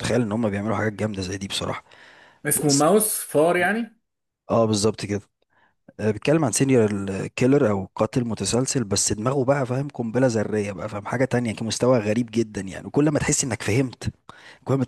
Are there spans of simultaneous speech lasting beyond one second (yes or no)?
no